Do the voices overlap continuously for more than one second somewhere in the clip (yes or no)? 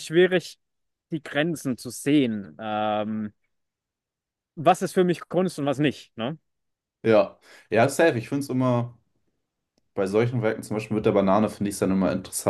no